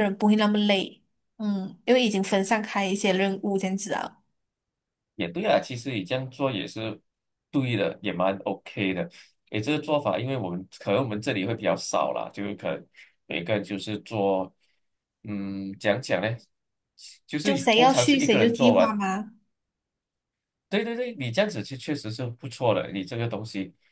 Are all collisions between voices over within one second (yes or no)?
no